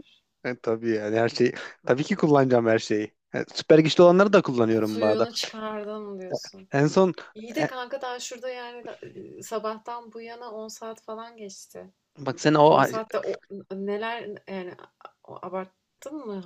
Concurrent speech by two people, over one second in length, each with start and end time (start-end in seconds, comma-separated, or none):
none